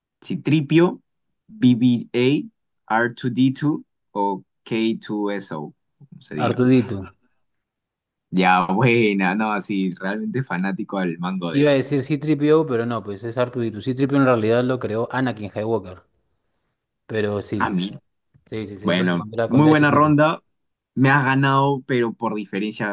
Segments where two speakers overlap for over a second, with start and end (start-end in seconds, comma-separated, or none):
18.8-20.1